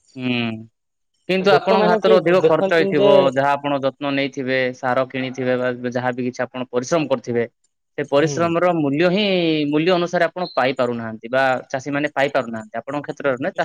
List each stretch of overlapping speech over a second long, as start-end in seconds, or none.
1.5-3.1